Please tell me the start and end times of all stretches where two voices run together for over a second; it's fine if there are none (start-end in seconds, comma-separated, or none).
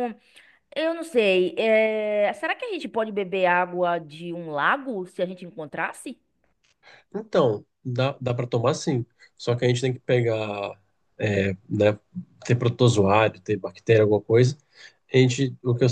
none